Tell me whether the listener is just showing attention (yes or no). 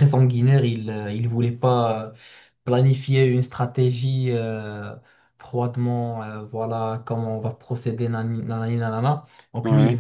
yes